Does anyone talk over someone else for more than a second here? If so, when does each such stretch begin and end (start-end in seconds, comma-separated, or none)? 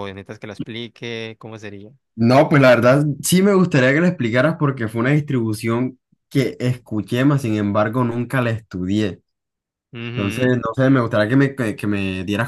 none